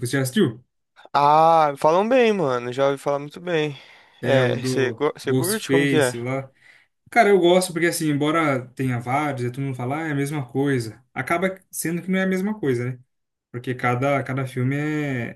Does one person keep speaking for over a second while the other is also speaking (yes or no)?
yes